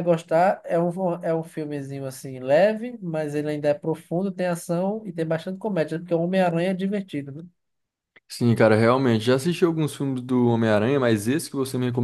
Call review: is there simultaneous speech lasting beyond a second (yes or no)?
no